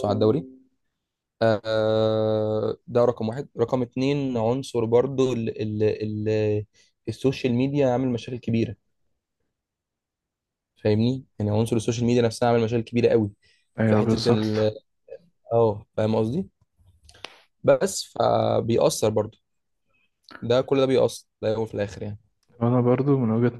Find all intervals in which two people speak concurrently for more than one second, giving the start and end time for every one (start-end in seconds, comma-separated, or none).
none